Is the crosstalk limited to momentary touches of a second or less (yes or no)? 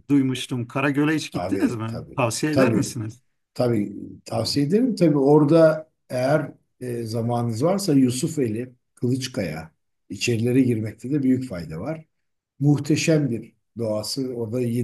no